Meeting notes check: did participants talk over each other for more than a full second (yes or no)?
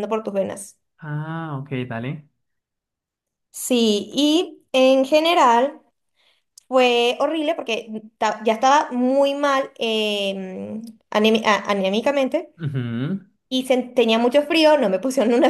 no